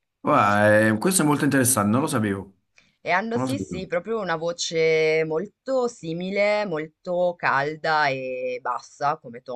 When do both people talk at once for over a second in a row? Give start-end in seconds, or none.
none